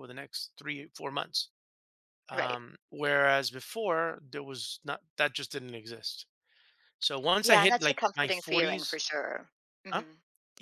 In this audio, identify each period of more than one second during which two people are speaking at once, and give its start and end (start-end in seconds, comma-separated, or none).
7.4-9.0